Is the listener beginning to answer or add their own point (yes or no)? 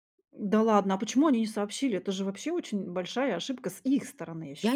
yes